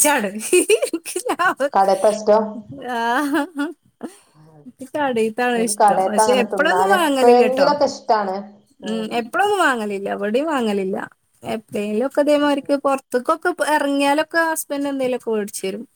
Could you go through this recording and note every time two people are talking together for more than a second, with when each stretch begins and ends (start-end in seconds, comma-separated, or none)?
5.6-7.7